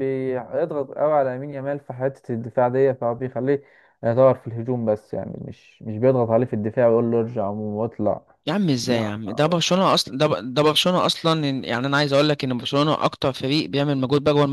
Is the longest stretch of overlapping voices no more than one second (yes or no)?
yes